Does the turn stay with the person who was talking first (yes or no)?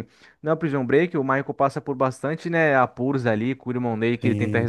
yes